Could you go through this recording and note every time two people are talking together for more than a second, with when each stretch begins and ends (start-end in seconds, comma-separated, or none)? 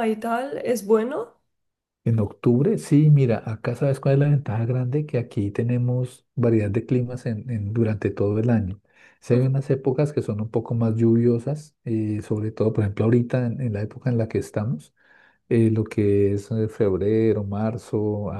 none